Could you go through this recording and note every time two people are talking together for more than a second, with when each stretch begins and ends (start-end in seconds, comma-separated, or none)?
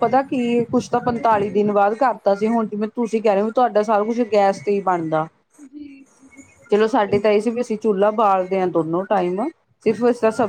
none